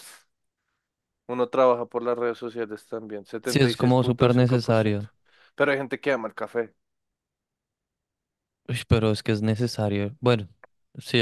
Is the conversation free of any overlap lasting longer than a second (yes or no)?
no